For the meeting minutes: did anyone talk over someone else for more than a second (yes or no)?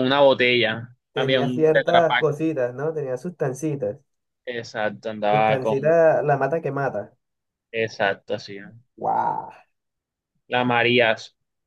yes